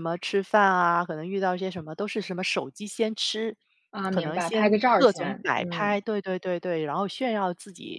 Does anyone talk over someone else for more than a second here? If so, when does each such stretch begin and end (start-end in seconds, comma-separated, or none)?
4.1-6.0